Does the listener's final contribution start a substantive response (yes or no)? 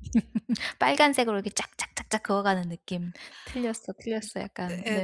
yes